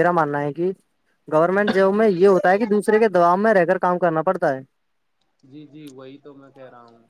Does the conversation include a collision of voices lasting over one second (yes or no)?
no